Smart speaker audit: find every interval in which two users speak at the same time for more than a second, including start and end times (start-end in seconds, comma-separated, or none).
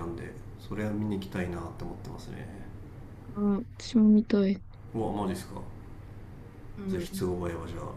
none